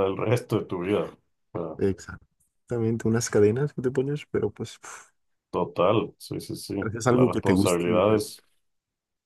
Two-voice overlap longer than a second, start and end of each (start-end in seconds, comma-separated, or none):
6.8-8.2